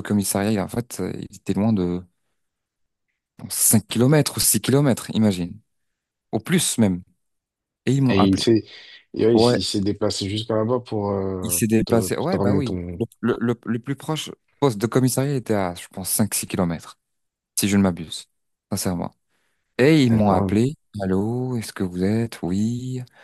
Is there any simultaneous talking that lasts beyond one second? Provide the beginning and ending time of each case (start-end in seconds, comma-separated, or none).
11.4-12.8